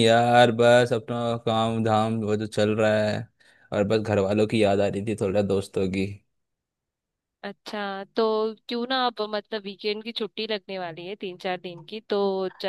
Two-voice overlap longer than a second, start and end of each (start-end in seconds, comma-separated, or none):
none